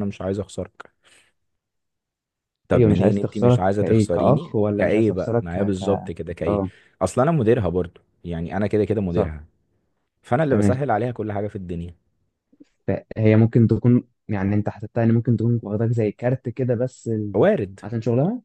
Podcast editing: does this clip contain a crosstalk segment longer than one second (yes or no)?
yes